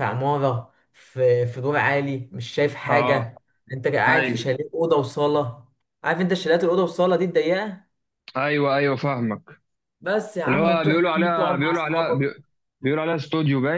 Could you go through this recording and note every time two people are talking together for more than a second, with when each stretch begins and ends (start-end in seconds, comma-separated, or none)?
10.5-12.3